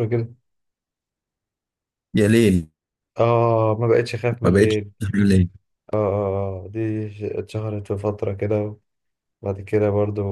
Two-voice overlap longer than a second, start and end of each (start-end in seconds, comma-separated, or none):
none